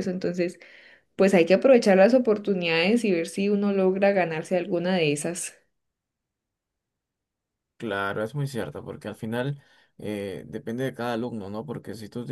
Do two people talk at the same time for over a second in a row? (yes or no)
no